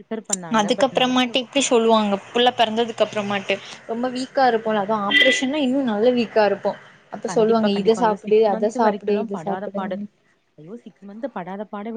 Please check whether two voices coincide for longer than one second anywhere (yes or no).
yes